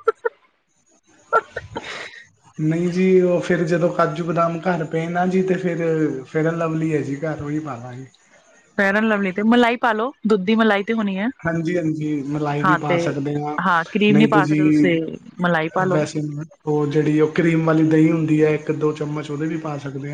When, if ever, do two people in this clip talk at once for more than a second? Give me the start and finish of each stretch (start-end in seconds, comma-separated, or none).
none